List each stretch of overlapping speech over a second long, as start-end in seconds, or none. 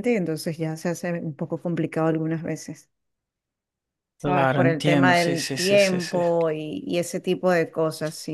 4.2-6.2